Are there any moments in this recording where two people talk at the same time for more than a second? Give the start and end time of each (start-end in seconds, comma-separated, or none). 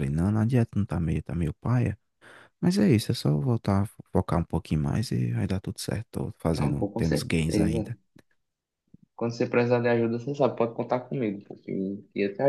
6.5-7.9